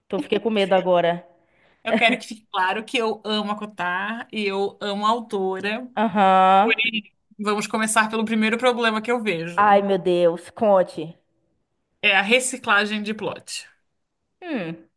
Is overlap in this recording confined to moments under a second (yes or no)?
yes